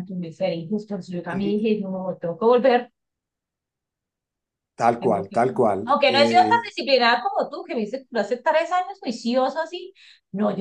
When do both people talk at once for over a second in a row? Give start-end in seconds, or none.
none